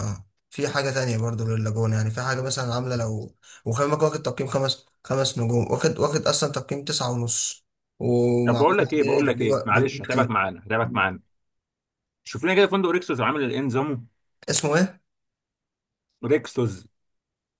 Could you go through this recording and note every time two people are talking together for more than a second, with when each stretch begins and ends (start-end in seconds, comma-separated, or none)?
8.4-10.3